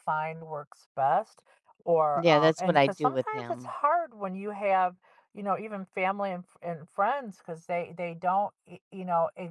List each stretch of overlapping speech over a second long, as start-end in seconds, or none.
2.1-3.8